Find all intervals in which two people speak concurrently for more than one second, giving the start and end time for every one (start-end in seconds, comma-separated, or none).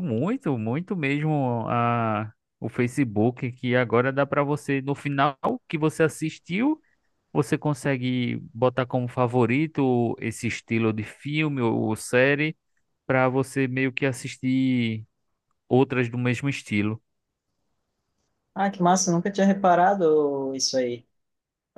none